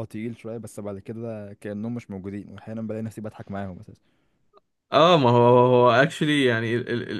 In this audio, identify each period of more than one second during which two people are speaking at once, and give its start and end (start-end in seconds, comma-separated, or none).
none